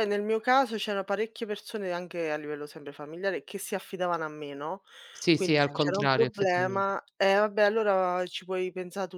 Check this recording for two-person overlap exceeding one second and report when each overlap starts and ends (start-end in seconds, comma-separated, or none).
5.3-6.9